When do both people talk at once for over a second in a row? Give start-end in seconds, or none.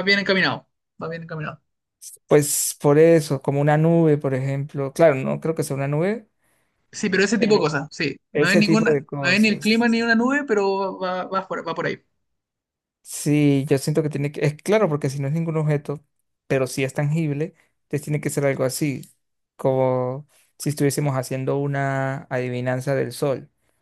8.3-9.9